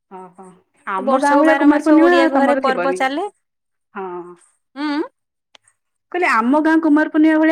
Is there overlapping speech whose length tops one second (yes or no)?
yes